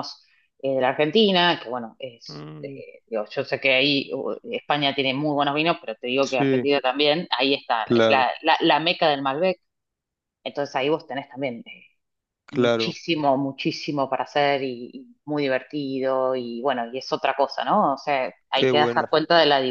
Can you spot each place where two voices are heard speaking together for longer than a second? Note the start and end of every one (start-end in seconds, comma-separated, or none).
none